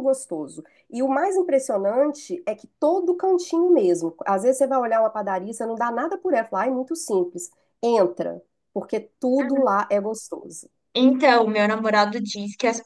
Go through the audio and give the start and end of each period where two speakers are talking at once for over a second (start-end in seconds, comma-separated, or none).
none